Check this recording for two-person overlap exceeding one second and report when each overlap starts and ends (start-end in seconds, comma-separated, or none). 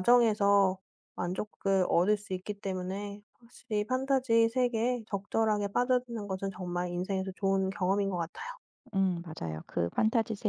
none